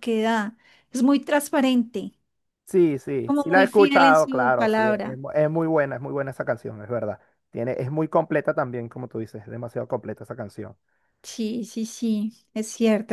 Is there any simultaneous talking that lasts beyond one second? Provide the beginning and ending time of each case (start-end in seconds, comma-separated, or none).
3.2-5.2